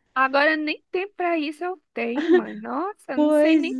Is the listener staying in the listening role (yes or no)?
yes